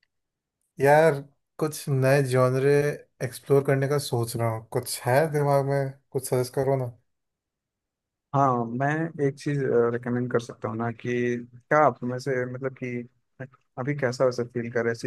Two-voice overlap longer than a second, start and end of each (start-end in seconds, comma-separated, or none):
none